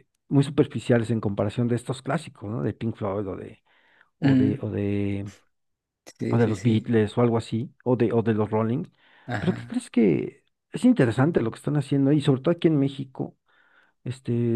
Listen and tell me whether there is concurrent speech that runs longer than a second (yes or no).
no